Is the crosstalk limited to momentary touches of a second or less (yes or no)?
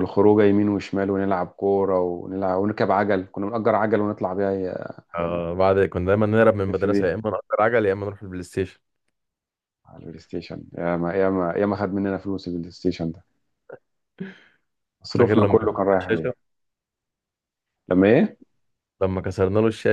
no